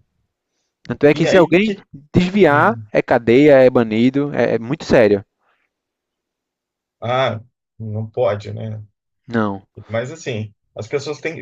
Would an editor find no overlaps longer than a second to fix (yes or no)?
yes